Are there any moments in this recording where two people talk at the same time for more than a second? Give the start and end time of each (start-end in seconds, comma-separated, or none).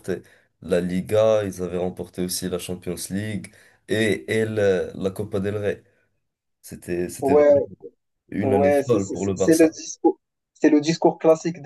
8.4-9.7